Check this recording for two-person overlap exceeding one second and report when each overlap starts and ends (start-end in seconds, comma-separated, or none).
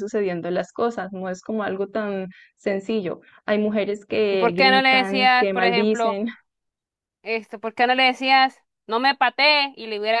4.3-6.2